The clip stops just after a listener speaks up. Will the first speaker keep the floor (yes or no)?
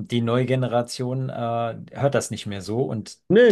yes